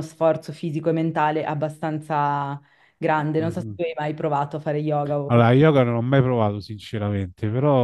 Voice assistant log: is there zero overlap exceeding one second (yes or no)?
yes